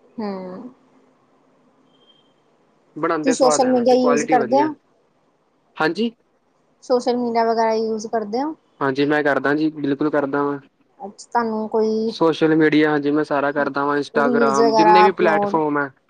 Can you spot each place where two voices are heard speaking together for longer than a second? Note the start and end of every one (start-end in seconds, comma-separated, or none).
3.2-4.6